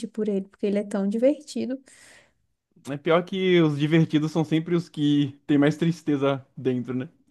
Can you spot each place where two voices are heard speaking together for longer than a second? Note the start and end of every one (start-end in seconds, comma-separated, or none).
none